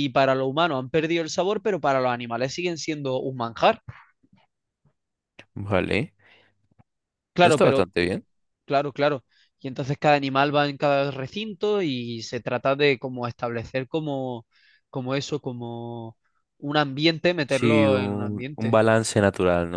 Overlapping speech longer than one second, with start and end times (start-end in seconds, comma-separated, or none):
17.4-18.8